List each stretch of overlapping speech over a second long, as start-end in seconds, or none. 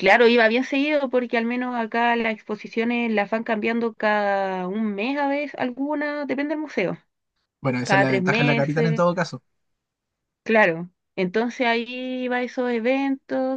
7.8-9.0